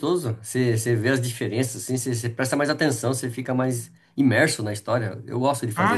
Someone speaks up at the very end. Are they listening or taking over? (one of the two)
taking over